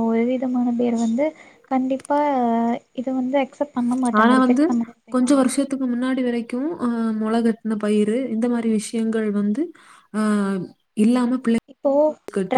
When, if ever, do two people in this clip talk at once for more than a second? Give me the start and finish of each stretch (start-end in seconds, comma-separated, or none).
none